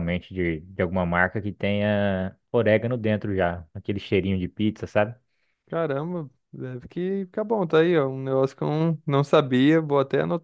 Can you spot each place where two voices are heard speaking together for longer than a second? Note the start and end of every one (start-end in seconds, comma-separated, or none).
none